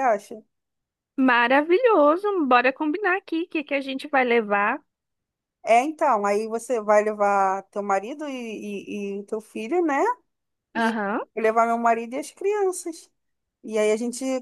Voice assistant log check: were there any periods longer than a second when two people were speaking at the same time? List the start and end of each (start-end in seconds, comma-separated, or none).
none